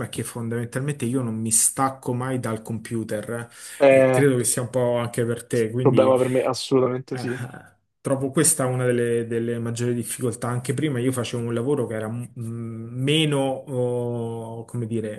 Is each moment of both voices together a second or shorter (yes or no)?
yes